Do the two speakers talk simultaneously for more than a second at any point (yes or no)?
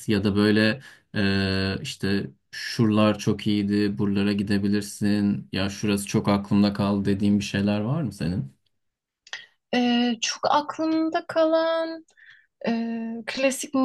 no